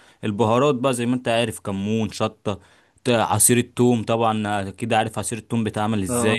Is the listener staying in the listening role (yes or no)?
yes